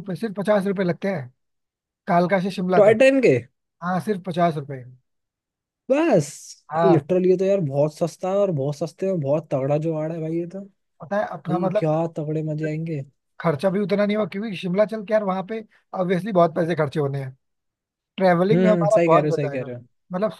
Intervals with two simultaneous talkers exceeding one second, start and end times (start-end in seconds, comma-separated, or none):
18.5-19.7